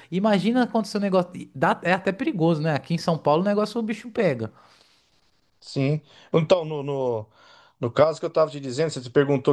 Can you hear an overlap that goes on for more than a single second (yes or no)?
no